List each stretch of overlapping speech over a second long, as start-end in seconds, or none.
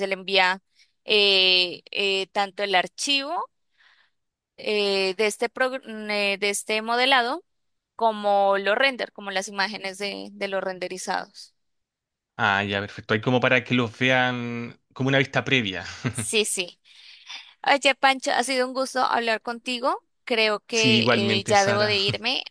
20.7-21.9